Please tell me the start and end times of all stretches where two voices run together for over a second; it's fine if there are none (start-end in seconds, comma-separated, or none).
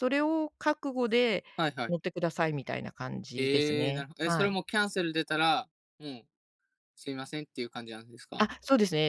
3.4-4.6